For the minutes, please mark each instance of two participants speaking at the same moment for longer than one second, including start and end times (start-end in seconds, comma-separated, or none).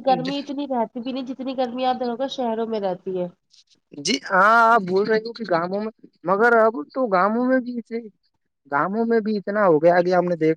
none